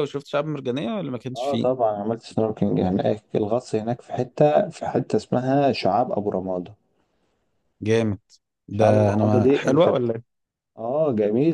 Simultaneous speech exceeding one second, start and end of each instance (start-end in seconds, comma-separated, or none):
8.8-10.1